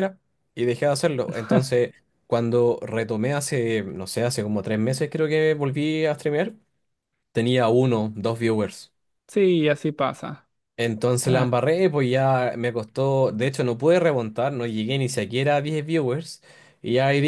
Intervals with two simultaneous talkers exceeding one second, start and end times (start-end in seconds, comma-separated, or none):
none